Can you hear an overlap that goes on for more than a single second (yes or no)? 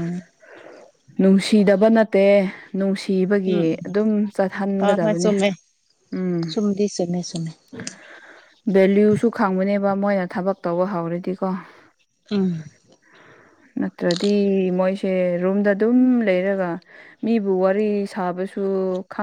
no